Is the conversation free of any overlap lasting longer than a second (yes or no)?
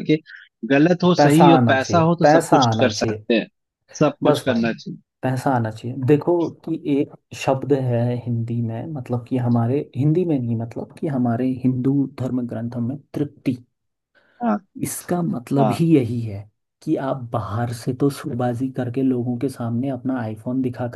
no